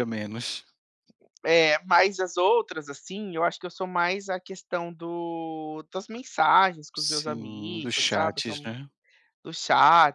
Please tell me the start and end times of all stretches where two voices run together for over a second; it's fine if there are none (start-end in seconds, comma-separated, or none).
6.9-8.7